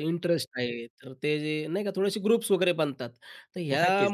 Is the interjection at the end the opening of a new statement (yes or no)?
no